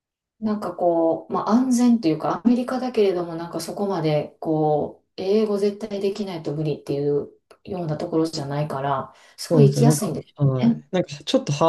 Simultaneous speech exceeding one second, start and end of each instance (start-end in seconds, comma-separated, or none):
9.5-10.8